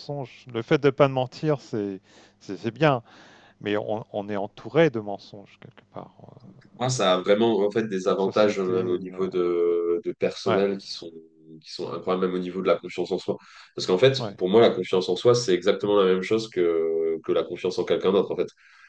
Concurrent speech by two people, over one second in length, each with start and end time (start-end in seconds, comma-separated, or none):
7.9-9.2